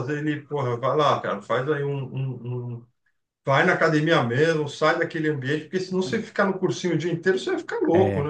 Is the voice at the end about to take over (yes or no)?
yes